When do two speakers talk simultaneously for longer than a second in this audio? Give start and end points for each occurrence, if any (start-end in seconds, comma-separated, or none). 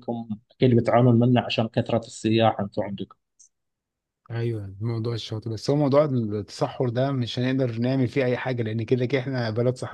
none